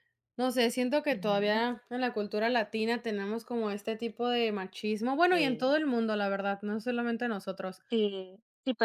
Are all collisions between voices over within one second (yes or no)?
yes